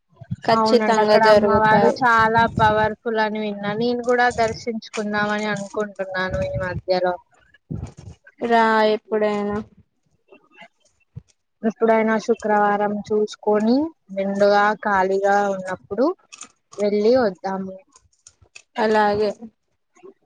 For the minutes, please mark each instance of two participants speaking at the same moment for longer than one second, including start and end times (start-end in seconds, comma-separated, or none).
0.6-2.0